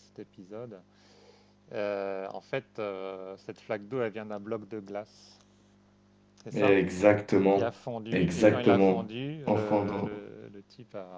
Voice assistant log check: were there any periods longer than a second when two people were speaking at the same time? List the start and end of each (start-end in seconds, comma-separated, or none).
7.5-10.1